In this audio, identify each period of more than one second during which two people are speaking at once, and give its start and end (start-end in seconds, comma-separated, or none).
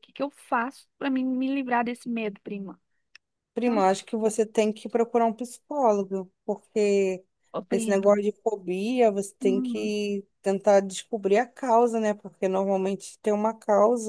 none